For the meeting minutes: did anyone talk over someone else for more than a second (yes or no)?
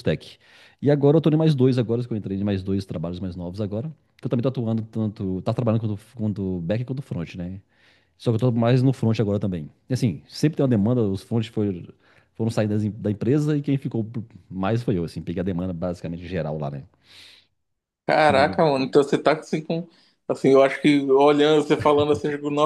no